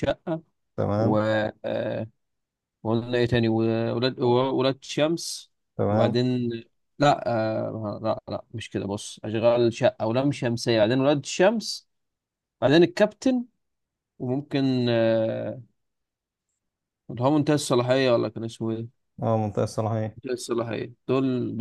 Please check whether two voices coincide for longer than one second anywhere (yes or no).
no